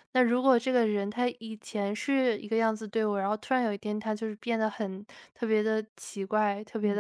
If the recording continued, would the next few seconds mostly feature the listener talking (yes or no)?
no